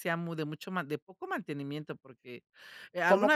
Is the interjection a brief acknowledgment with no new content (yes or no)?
yes